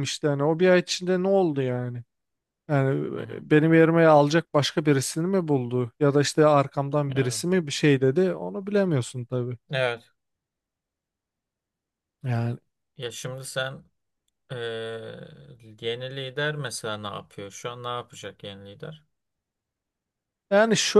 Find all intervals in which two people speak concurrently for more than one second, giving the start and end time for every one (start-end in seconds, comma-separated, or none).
none